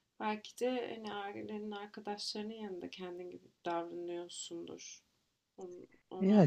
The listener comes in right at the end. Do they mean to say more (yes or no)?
no